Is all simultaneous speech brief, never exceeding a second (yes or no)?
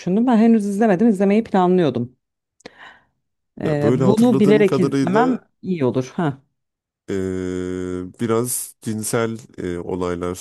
no